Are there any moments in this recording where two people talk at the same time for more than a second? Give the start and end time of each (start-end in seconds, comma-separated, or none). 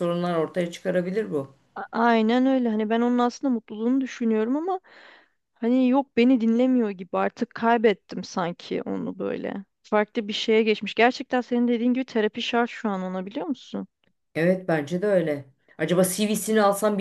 none